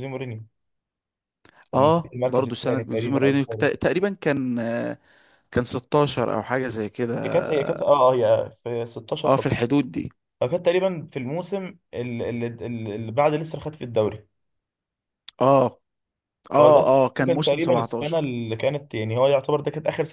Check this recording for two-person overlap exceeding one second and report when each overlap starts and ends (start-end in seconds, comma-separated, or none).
1.7-3.7, 16.6-18.4